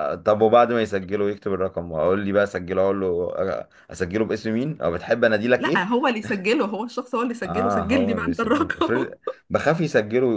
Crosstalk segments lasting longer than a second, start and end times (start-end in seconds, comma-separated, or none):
7.5-9.1